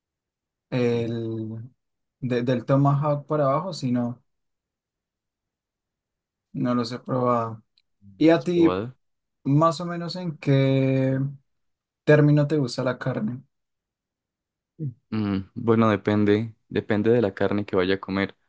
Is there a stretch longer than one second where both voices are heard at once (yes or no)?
no